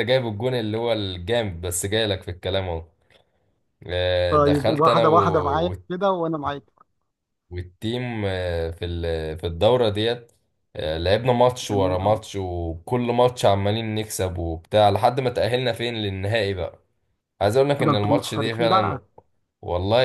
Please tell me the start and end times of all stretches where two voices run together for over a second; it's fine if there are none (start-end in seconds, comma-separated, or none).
4.3-5.8, 17.8-19.0